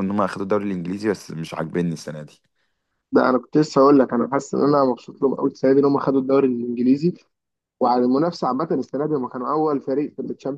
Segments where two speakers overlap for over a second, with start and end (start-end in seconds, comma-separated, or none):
none